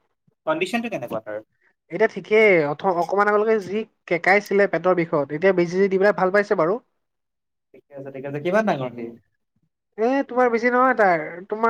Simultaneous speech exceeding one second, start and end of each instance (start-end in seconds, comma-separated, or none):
none